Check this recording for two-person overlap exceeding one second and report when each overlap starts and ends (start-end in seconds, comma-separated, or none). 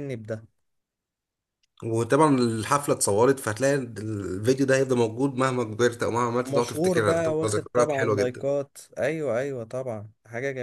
6.4-8.5